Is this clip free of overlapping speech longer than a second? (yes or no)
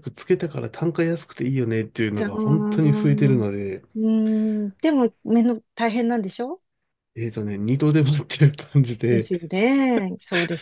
no